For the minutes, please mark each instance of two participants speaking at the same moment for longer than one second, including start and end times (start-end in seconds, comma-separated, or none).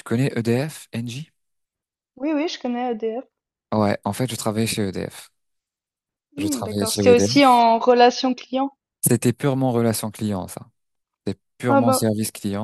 6.4-7.6